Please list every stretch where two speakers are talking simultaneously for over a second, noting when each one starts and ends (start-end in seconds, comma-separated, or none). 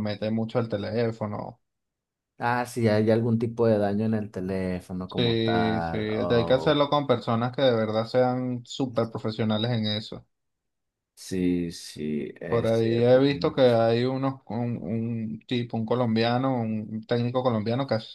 5.1-6.8, 12.5-13.9